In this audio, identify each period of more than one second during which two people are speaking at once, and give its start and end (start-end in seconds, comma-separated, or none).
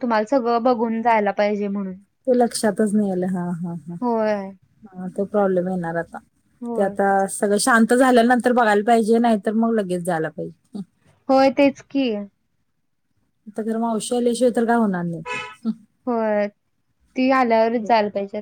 none